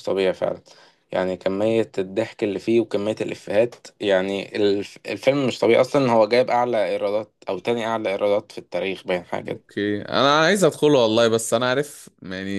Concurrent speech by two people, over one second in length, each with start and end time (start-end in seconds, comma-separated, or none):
none